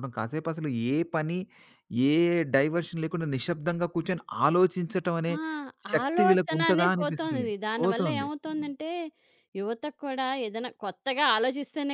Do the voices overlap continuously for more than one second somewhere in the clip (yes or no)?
yes